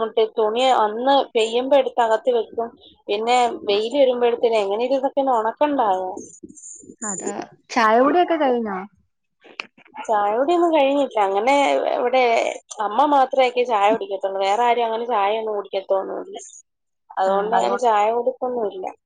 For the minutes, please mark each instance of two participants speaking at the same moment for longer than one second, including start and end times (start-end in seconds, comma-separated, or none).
none